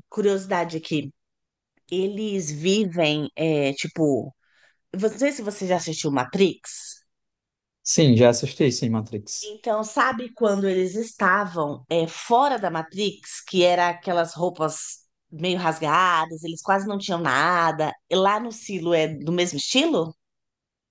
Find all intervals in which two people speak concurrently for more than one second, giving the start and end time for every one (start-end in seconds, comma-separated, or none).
none